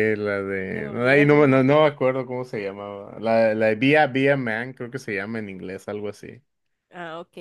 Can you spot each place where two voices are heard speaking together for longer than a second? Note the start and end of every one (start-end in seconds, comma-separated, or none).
0.7-1.9